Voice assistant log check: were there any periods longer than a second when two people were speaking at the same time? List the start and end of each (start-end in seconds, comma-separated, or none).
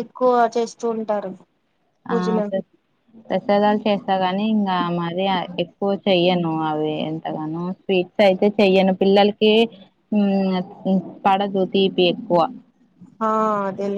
none